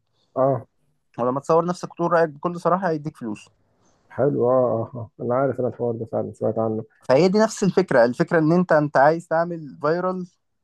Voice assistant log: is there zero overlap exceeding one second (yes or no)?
yes